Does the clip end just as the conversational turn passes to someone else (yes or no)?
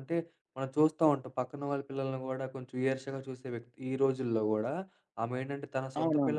no